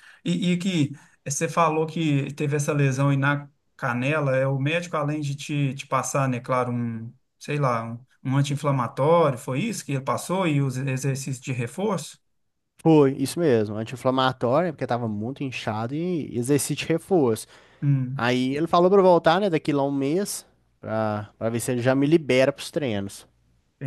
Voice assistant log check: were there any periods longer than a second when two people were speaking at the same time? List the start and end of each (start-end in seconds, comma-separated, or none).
none